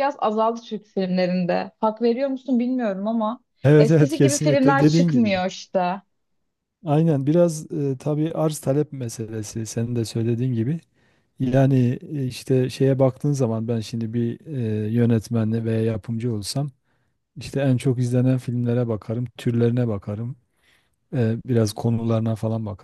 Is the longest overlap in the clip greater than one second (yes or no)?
yes